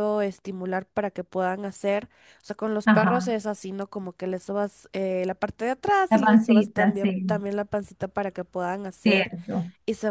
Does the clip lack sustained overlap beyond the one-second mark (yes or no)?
no